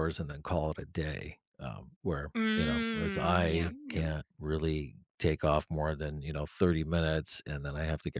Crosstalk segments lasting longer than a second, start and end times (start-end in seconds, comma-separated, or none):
2.4-4.0